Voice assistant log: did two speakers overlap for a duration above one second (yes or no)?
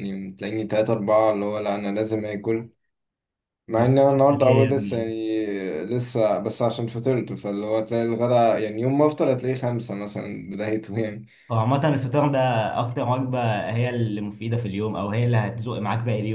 yes